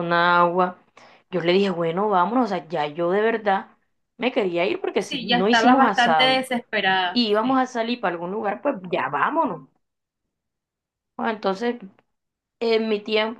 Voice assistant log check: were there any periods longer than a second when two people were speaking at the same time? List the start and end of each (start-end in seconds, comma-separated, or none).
5.0-6.5